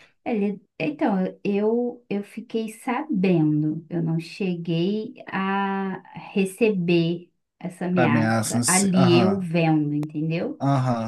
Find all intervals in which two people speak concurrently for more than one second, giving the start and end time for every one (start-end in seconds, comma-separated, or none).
7.9-9.5